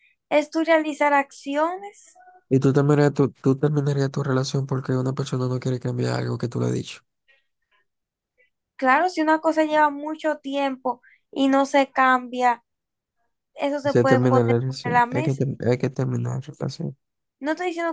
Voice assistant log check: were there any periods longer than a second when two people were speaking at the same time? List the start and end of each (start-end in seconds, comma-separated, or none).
13.8-15.4